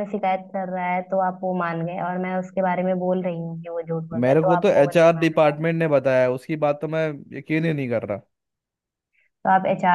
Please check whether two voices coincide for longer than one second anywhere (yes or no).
yes